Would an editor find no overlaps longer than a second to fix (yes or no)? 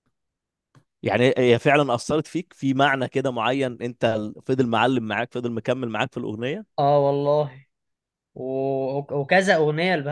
yes